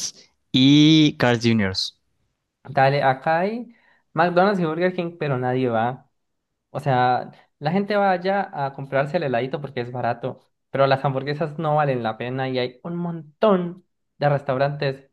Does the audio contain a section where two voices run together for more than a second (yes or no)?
no